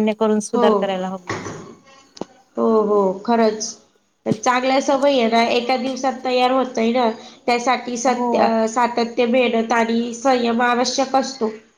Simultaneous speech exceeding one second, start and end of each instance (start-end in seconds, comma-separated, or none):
none